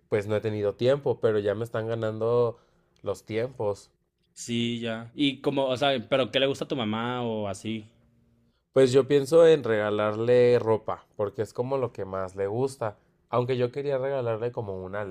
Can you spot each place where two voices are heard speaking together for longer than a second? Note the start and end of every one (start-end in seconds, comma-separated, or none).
none